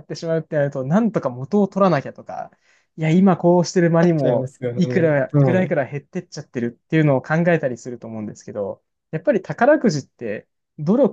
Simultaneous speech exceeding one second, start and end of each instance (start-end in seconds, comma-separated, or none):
4.0-5.8